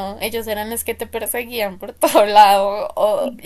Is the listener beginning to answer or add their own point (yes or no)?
no